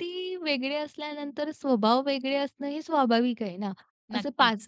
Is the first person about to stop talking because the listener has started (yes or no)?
no